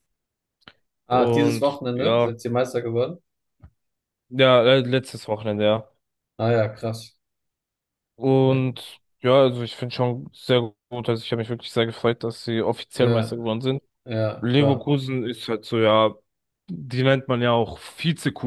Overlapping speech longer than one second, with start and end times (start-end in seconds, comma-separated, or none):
1.1-2.3